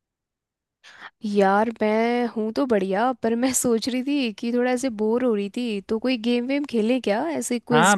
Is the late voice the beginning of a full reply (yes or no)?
yes